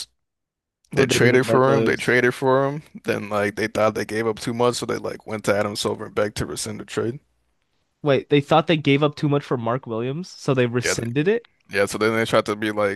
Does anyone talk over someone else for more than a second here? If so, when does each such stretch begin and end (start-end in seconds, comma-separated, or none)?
0.9-2.2